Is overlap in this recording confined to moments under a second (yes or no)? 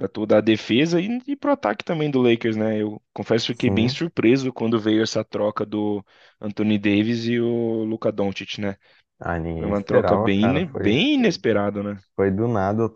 no